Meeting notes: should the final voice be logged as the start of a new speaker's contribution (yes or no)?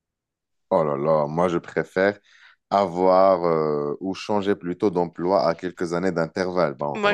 yes